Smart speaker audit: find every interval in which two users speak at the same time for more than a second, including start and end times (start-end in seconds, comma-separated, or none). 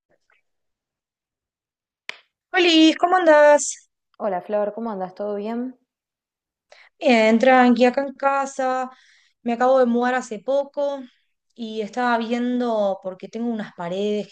none